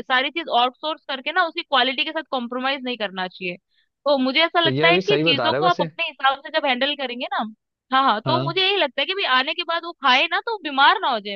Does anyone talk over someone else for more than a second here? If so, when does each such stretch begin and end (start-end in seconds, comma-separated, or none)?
4.6-5.9